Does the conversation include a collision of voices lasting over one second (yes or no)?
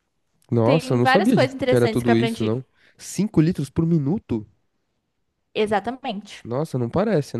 yes